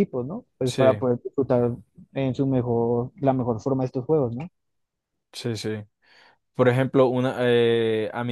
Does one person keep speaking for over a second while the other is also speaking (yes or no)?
no